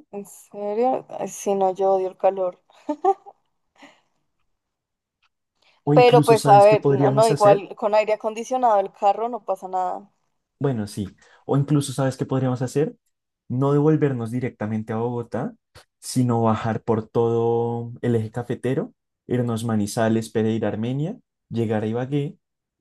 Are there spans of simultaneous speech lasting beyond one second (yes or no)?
yes